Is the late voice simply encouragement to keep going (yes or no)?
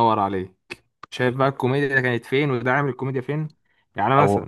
yes